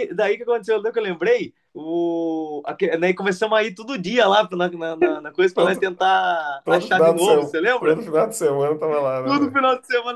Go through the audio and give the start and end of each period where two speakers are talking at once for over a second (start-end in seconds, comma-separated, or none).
6.6-8.0